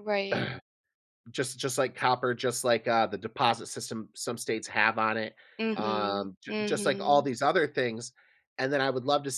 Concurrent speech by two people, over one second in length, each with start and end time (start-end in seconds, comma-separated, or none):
5.8-7.3